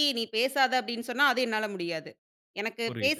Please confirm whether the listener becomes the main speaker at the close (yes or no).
no